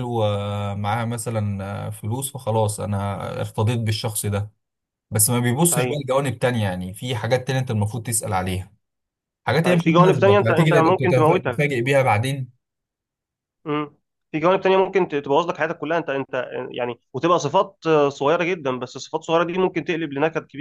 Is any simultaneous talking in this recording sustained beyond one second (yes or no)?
yes